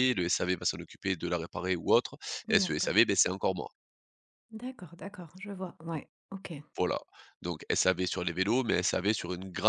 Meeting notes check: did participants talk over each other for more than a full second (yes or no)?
no